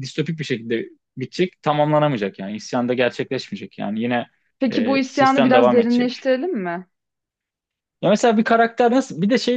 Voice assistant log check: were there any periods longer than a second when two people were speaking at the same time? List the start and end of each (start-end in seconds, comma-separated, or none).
4.7-6.1